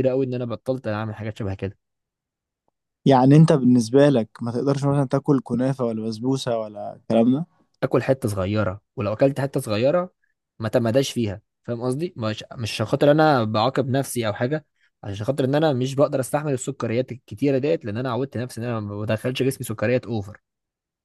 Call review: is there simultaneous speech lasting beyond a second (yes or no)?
no